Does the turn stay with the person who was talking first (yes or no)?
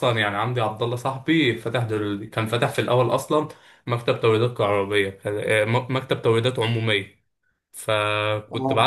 yes